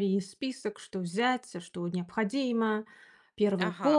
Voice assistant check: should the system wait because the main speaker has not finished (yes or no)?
no